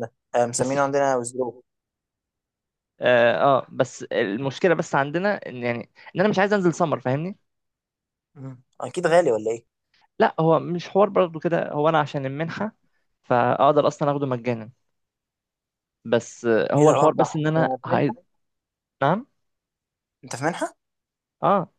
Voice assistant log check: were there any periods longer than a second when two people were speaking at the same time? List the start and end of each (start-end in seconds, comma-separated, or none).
16.8-18.1